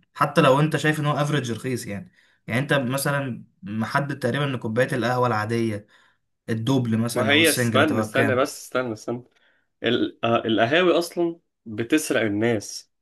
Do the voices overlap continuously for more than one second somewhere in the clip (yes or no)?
yes